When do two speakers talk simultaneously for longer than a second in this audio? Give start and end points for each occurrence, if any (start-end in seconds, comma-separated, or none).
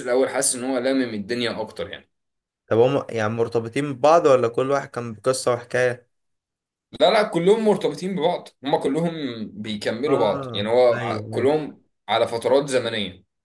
10.1-11.5